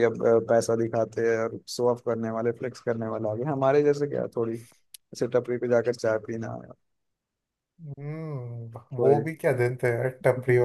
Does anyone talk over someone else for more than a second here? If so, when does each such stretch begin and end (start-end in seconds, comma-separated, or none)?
none